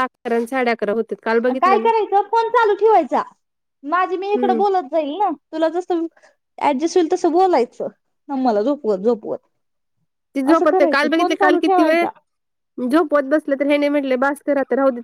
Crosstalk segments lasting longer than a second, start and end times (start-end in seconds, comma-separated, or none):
10.5-12.1